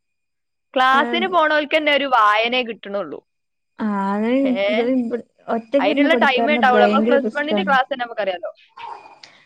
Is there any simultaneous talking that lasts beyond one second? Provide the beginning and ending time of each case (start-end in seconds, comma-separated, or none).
5.8-7.7